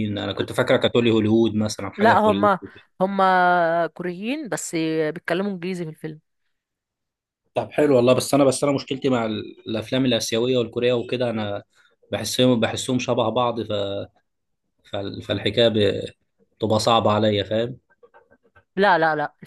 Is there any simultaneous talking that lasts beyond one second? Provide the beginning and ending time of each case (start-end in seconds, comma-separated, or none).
none